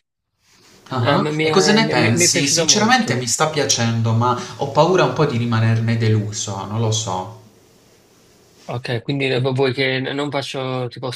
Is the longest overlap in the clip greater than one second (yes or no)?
yes